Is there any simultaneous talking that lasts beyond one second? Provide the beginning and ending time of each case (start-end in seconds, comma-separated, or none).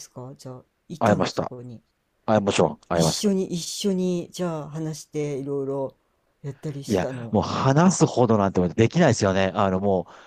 none